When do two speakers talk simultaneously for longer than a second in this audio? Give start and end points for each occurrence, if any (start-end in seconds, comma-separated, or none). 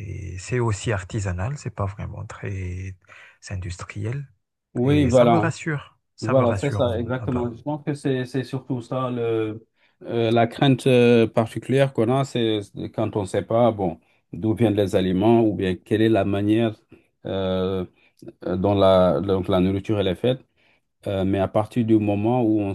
6.2-7.5